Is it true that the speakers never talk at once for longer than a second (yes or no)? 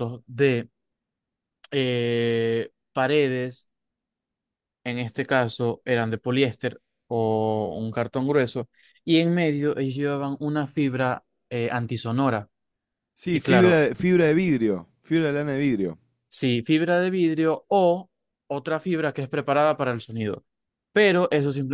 yes